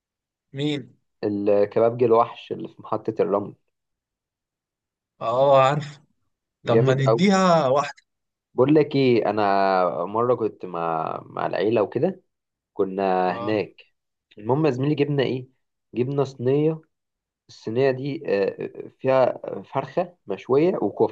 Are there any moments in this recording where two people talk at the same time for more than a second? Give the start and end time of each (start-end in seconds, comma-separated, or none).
none